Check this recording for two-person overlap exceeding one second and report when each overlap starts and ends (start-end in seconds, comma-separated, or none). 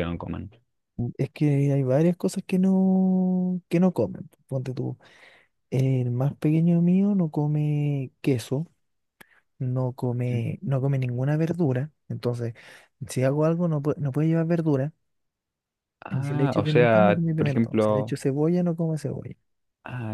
16.1-18.2